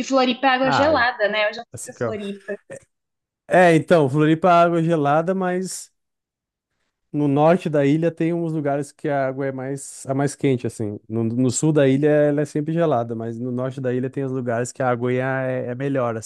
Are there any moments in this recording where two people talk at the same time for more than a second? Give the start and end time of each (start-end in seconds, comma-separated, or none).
none